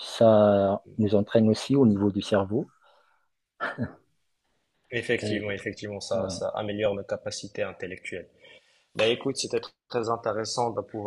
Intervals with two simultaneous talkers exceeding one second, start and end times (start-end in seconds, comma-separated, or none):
none